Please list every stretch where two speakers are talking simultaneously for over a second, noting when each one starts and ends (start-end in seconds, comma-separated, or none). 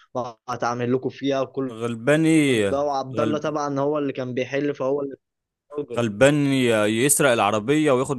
none